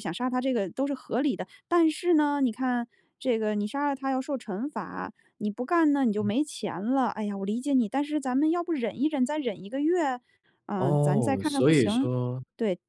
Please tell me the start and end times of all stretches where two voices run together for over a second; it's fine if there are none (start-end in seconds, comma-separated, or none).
10.8-12.1